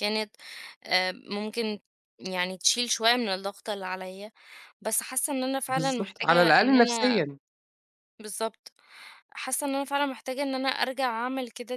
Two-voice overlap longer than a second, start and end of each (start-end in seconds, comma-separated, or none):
5.7-7.2